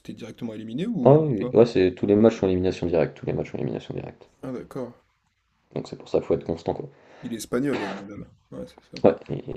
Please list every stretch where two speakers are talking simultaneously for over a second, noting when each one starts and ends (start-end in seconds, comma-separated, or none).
none